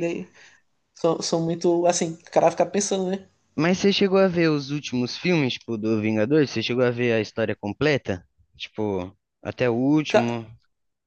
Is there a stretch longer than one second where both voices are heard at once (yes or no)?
no